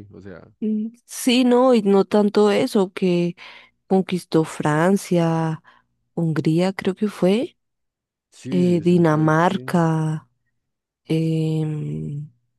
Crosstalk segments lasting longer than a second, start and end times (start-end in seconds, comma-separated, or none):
8.5-9.8